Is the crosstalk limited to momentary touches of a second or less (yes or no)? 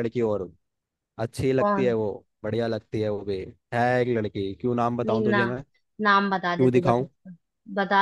yes